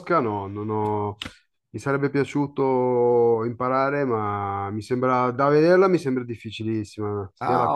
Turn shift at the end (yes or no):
yes